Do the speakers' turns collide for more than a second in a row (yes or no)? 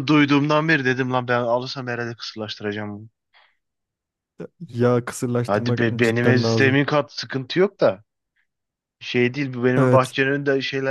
yes